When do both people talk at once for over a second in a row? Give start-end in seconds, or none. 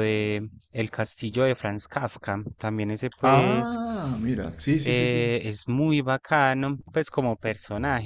none